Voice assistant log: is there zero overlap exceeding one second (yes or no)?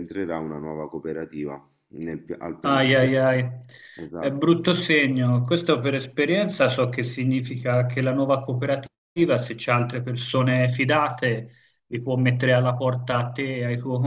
yes